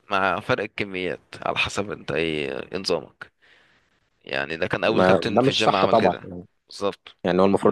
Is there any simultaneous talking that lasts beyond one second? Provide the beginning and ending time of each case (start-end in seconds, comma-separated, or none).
4.8-6.2